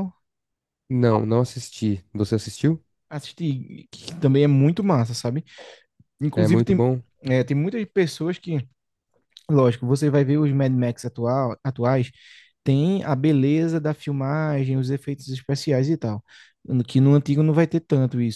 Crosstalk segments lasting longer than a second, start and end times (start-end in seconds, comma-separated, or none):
none